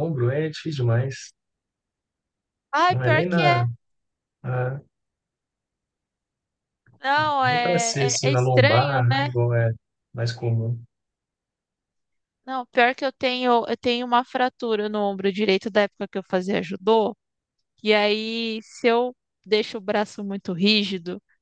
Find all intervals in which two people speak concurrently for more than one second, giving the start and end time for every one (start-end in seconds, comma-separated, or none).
7.4-9.3